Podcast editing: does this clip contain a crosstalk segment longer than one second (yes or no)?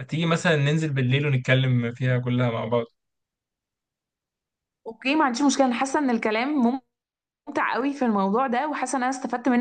no